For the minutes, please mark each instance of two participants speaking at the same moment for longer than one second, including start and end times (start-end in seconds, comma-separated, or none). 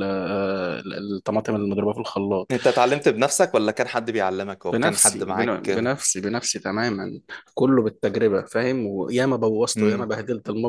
4.7-5.9